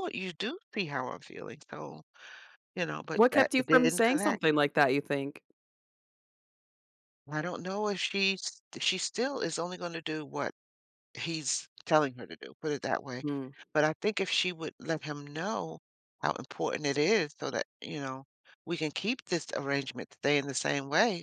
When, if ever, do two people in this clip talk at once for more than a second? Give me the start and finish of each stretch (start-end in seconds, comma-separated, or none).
3.1-4.4